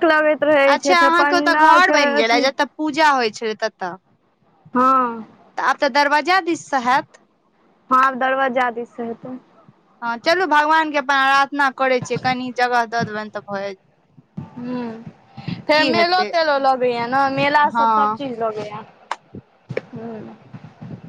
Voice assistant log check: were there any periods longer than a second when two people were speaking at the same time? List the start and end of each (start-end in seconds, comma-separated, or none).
0.8-2.4